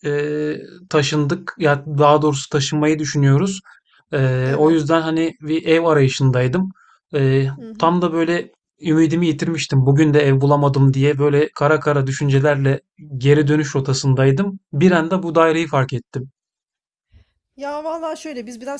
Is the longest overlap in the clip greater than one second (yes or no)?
no